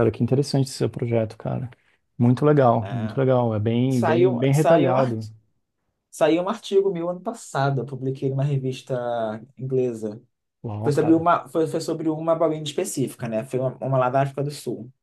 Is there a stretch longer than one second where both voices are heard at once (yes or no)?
yes